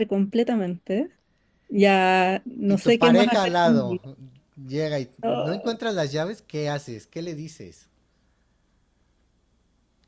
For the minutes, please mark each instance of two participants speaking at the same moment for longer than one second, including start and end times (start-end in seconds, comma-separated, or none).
2.7-4.0